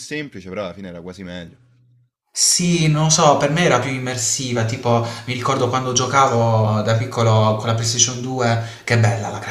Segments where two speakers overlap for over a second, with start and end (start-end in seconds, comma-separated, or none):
none